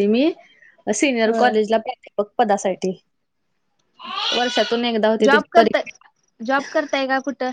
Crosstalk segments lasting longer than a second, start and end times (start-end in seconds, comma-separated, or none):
none